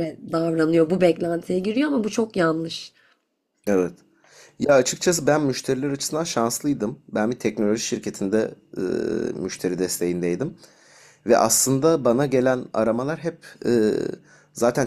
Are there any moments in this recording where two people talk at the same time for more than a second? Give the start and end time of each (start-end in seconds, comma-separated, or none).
none